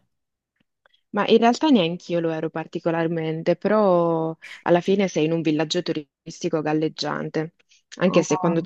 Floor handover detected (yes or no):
no